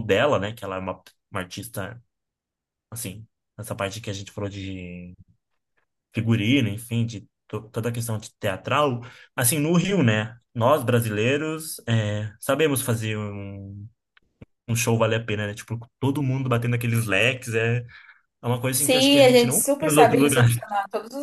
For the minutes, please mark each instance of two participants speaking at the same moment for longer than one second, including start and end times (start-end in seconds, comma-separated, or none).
18.7-20.6